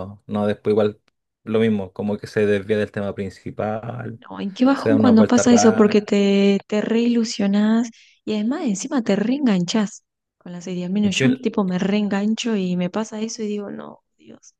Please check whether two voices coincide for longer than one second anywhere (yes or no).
yes